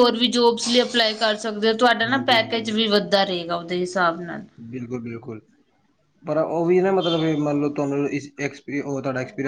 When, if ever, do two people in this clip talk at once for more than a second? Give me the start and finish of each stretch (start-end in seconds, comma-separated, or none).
none